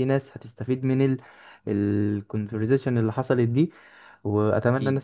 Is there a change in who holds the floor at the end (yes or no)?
no